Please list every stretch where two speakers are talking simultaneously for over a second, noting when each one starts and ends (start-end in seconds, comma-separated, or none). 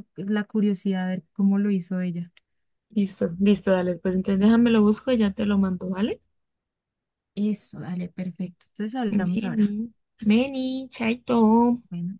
none